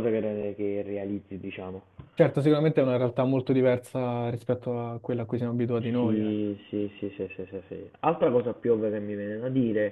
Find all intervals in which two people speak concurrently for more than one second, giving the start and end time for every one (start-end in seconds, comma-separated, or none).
none